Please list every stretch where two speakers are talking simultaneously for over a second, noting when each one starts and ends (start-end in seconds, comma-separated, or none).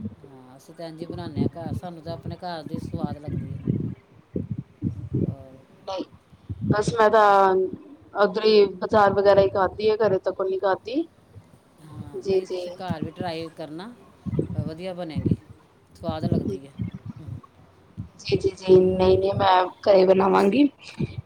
none